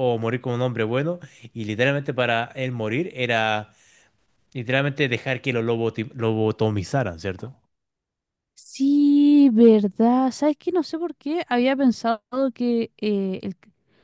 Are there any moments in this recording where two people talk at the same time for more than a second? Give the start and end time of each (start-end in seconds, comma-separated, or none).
none